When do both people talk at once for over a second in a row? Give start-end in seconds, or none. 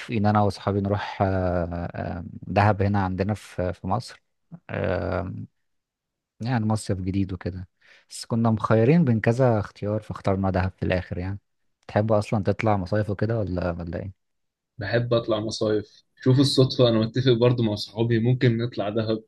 none